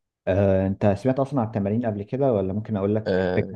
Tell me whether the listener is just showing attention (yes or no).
no